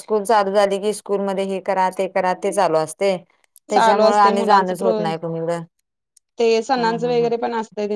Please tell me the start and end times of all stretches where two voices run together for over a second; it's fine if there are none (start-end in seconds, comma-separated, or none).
3.7-5.0